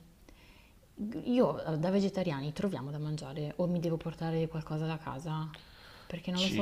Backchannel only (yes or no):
no